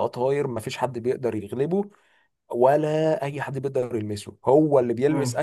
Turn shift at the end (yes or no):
no